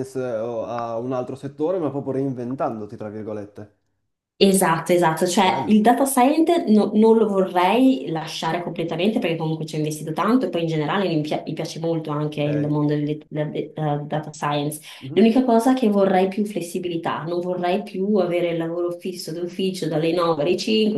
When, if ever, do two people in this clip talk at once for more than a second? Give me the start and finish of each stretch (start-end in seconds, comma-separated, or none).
none